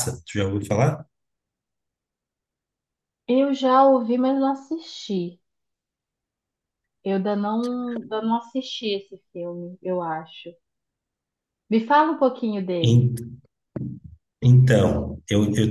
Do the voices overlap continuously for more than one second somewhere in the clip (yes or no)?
no